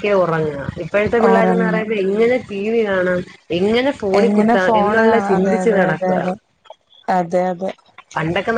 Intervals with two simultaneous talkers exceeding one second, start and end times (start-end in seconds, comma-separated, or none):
4.2-6.2